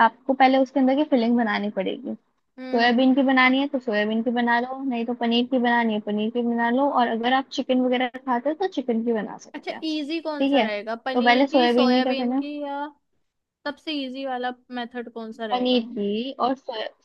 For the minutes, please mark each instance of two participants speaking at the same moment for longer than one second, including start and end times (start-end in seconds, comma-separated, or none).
9.6-12.4